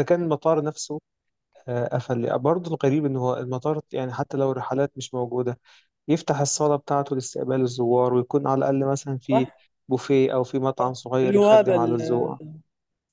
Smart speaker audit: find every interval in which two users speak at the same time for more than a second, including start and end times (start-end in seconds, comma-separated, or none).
10.8-12.4